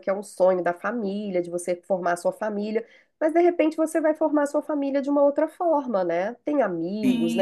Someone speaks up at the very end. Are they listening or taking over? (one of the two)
taking over